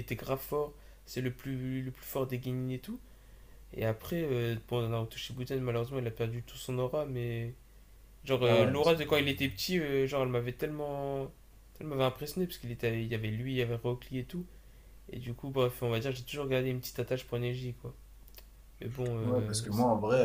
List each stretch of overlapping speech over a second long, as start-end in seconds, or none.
none